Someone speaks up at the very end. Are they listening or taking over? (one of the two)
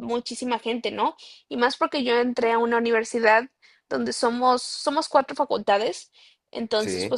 listening